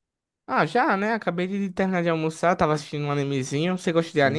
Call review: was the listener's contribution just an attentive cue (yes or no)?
no